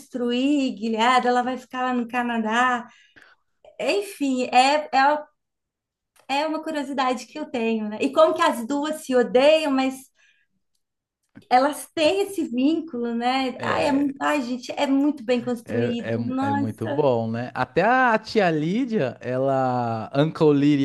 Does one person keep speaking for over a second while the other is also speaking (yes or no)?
yes